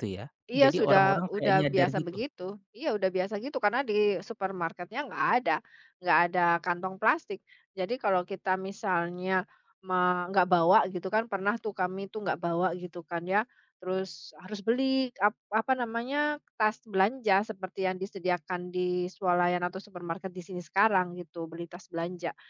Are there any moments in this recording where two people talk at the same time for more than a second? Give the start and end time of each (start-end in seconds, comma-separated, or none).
0.6-2.1